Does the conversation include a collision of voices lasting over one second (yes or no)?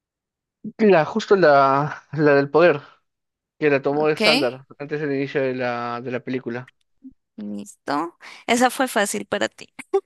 no